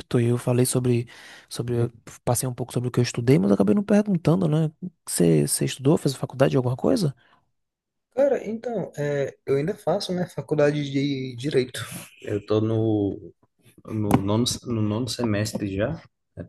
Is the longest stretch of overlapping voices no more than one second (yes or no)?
yes